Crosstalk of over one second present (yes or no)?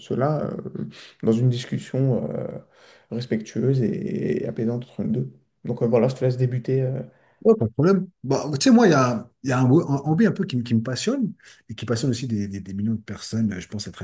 no